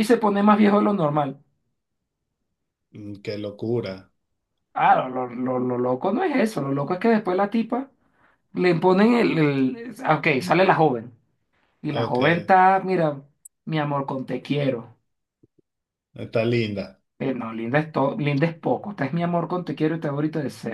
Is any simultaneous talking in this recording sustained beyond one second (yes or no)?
no